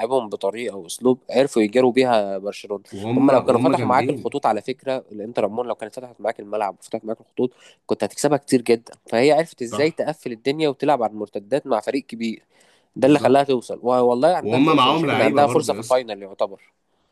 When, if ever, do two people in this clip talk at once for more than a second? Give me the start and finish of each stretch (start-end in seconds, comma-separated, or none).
2.9-4.4, 14.4-16.0